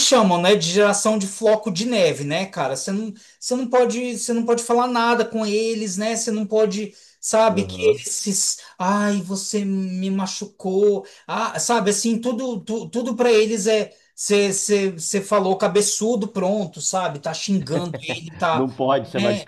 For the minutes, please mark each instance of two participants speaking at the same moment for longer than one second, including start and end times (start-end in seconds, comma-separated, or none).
none